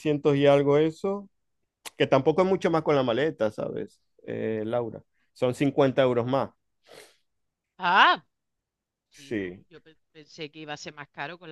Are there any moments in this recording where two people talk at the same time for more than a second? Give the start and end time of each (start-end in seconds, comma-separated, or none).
none